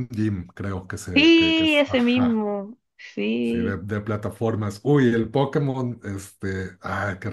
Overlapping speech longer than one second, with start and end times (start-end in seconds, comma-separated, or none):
1.1-2.4